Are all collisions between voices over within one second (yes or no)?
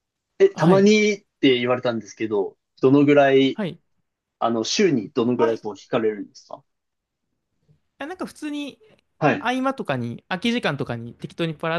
yes